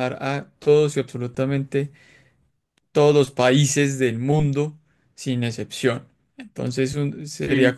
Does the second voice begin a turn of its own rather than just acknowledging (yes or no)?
no